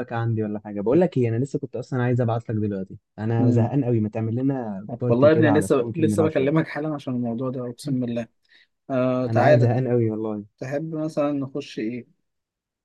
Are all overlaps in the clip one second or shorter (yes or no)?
no